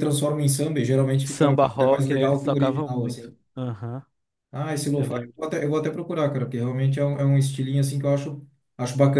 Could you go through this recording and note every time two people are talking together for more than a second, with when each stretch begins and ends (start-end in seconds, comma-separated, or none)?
1.2-3.3